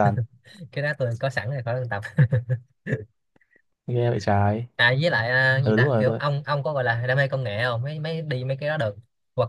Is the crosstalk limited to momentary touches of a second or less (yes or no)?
yes